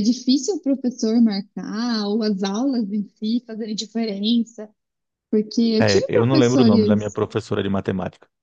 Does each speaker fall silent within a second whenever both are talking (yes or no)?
no